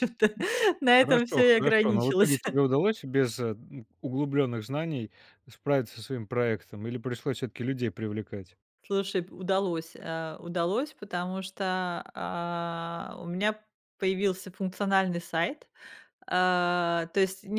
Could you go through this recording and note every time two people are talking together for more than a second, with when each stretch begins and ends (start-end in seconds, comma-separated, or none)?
0.8-2.4